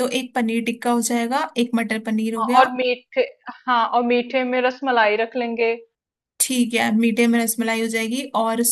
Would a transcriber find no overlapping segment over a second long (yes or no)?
yes